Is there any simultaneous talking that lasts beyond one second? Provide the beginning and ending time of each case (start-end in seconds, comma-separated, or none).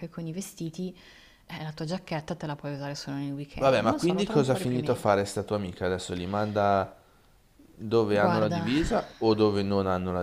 3.5-5.1